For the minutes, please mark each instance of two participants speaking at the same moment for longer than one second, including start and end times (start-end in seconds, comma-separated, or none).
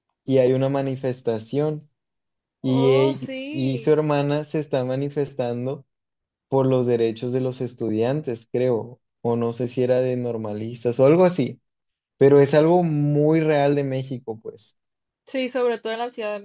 2.6-3.9